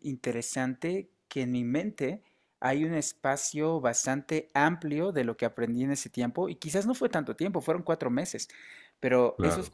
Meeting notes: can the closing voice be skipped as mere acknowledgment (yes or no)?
yes